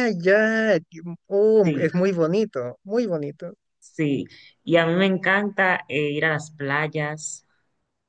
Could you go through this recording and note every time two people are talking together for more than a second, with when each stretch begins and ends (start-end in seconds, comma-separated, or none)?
none